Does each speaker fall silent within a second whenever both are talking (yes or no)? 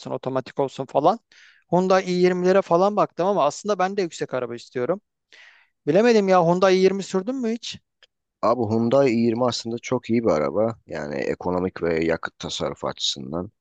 yes